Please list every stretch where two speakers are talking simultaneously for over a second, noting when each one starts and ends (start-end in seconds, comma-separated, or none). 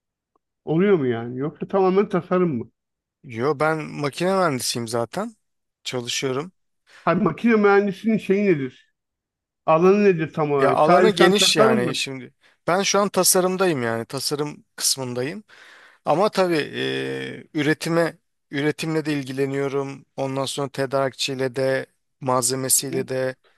10.6-11.9